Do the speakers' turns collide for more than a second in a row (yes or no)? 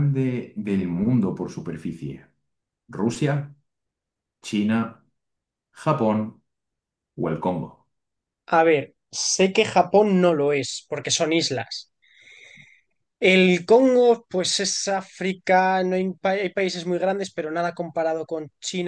no